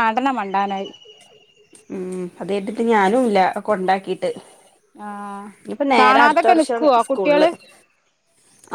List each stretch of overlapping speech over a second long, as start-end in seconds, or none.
6.0-7.5